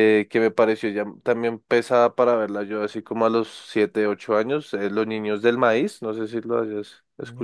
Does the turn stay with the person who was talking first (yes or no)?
no